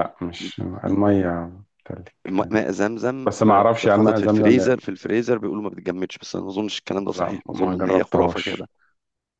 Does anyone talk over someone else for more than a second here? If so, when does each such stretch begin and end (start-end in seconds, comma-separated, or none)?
3.2-4.7, 7.1-8.7